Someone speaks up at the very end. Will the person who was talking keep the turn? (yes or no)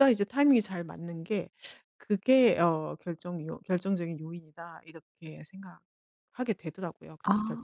no